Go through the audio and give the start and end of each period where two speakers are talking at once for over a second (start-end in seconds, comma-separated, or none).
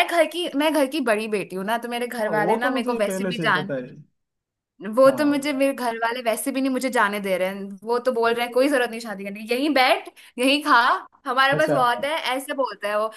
2.2-3.7